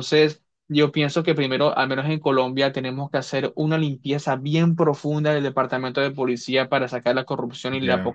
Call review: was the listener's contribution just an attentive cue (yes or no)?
yes